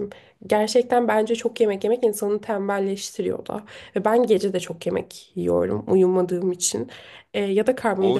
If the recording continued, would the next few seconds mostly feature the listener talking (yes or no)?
yes